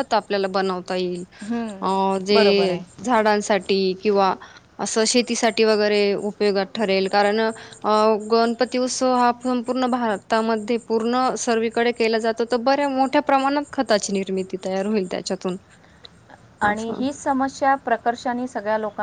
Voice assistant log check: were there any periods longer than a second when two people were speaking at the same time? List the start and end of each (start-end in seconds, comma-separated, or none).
none